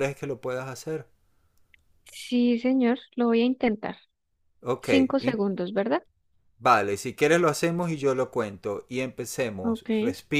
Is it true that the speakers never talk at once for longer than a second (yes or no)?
yes